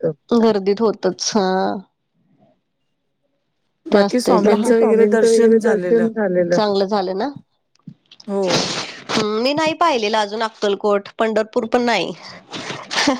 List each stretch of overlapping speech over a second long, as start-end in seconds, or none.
3.9-6.1